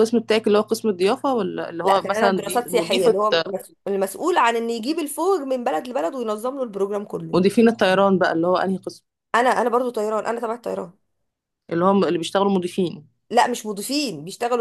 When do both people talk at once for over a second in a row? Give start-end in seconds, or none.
1.8-3.2